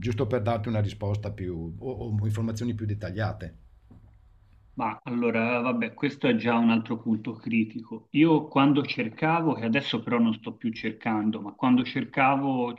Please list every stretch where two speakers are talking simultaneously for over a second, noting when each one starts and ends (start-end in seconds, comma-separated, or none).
none